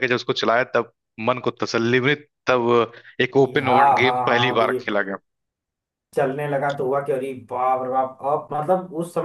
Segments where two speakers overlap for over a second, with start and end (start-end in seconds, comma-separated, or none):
3.4-4.8